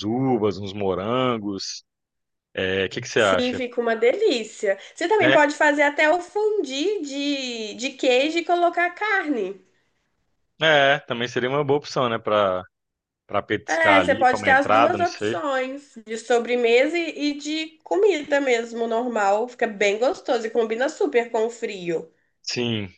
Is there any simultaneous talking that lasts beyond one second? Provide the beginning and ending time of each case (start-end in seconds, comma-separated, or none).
13.7-15.4